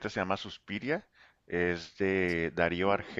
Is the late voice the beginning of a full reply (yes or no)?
no